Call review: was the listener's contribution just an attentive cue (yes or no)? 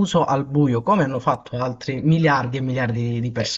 no